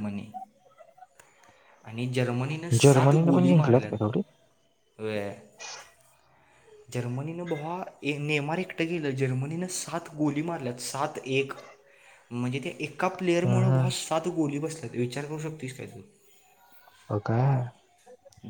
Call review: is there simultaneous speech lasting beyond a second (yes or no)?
yes